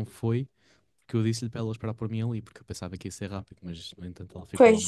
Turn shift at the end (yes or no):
no